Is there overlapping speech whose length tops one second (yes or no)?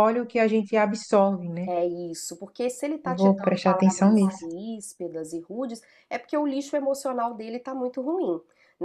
yes